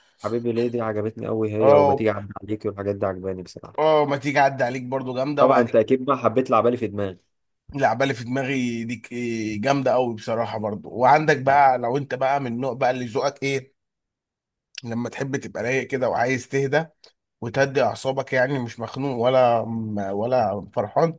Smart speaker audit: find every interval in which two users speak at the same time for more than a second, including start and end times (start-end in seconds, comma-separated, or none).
none